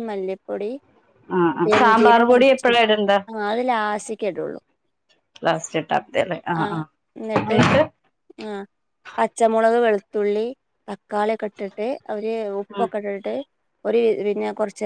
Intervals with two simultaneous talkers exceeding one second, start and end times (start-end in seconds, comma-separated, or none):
none